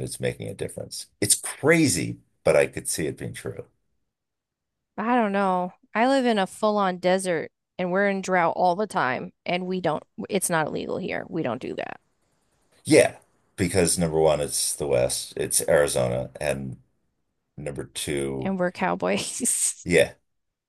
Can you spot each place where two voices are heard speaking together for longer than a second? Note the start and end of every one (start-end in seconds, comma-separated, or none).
none